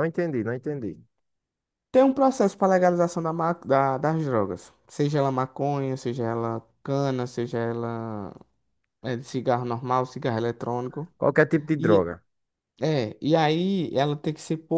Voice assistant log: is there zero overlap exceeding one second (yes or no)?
yes